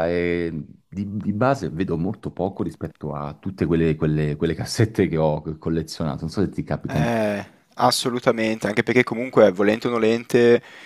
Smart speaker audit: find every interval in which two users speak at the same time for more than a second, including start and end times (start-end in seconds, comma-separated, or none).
none